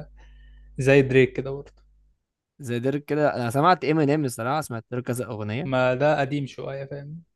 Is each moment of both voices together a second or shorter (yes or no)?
yes